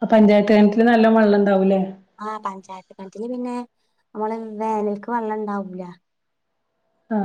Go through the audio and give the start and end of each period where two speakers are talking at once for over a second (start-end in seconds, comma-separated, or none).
none